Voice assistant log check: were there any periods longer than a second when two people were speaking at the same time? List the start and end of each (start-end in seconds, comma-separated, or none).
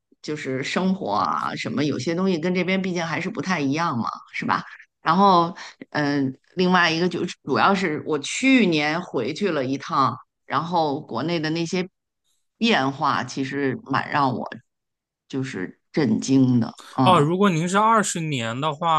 none